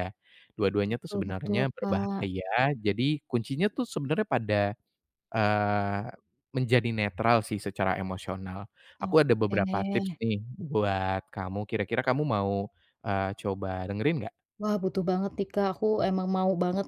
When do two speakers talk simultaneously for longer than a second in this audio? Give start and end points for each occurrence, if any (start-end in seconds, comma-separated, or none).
0.9-2.3